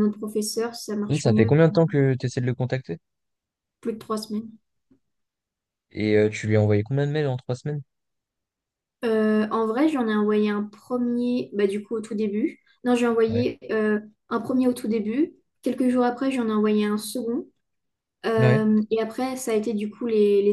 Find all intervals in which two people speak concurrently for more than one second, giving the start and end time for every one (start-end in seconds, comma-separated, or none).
none